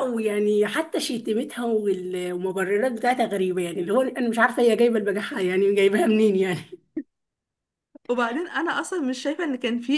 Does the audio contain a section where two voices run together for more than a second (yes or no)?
no